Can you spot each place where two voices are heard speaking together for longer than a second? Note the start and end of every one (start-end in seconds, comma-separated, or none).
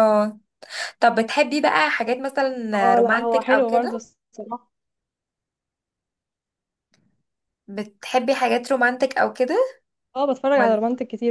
2.7-4.0